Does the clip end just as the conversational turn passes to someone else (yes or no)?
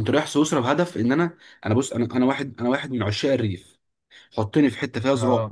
no